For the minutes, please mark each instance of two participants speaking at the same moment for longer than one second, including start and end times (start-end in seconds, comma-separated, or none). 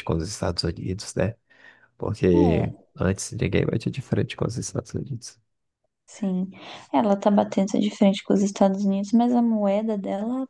none